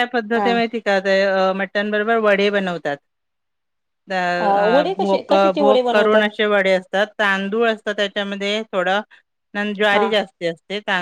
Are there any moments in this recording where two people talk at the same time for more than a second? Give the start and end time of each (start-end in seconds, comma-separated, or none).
4.4-6.3